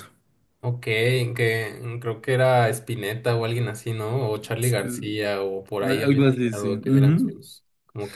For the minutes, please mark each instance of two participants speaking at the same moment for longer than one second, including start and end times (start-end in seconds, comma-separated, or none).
5.8-7.4